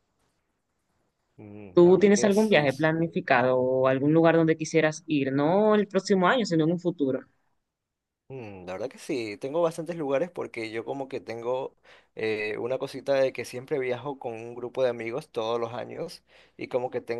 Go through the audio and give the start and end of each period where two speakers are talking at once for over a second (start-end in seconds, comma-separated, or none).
1.7-2.9